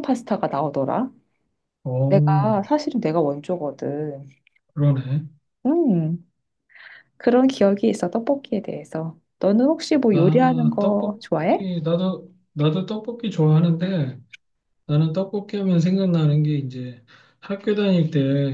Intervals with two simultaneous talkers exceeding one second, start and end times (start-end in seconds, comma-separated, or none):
10.1-11.7